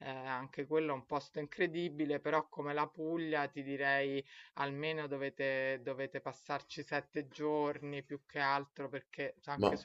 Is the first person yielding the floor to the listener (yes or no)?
no